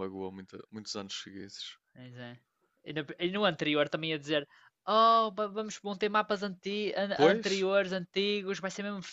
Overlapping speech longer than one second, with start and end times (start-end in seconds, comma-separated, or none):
none